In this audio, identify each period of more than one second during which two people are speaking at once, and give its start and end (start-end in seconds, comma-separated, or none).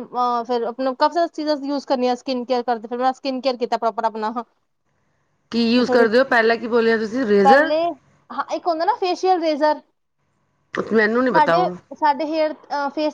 none